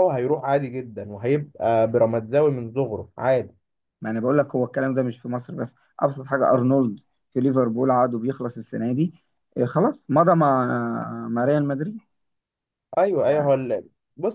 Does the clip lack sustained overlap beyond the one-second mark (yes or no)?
yes